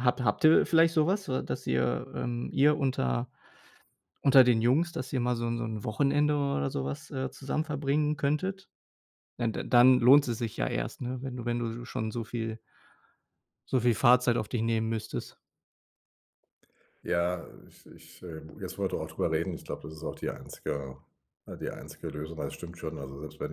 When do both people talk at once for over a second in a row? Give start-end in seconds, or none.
none